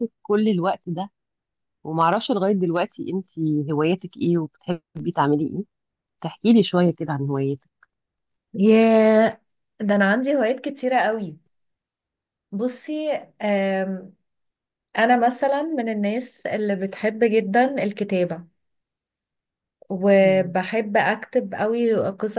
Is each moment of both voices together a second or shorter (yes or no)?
yes